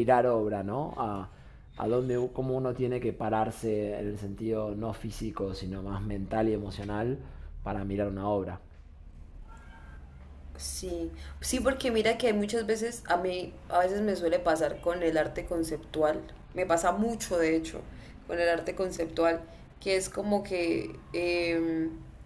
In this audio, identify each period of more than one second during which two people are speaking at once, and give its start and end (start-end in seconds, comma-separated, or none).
none